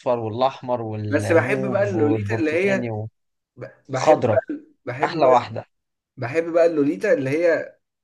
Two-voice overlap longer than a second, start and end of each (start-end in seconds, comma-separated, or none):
1.1-2.9